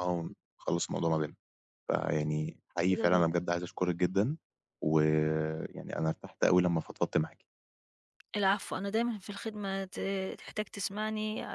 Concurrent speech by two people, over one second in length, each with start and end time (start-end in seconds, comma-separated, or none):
none